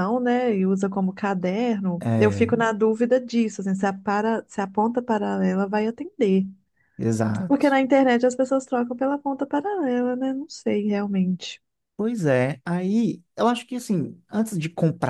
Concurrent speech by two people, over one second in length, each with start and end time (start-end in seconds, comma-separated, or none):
none